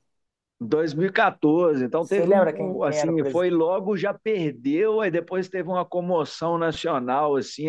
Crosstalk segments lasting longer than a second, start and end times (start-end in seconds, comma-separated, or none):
2.0-3.5